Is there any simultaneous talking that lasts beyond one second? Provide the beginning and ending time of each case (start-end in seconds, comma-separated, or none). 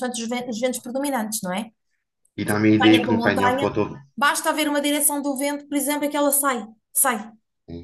2.4-3.8